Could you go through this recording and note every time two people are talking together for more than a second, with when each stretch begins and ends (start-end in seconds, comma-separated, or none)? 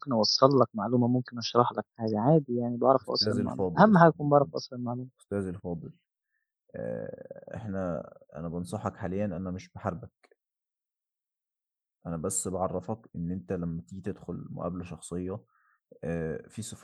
3.0-4.5